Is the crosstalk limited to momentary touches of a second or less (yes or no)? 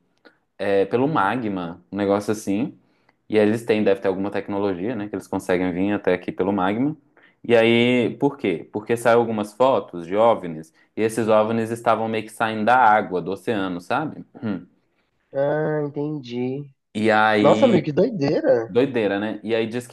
yes